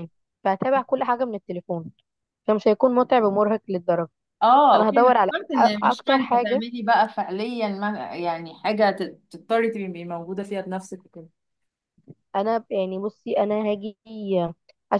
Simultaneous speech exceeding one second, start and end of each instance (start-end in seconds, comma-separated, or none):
4.7-6.6